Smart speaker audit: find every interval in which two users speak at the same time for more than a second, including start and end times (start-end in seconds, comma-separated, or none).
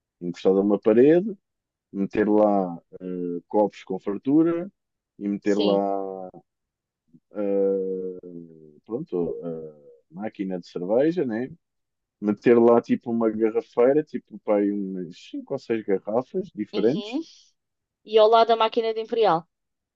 none